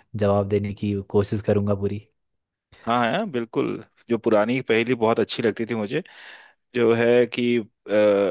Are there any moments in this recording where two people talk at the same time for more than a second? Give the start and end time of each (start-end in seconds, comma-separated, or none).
none